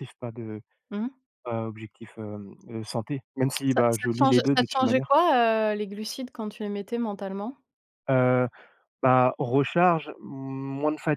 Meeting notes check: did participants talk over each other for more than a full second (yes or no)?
yes